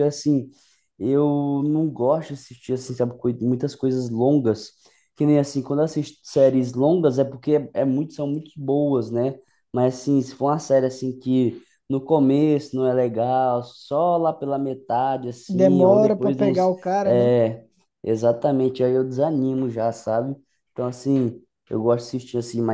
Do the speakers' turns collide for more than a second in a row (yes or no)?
yes